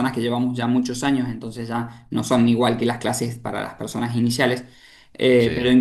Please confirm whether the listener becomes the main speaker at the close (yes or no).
no